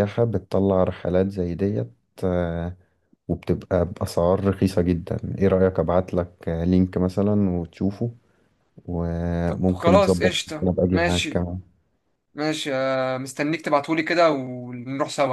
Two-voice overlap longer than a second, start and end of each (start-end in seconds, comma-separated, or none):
9.5-11.5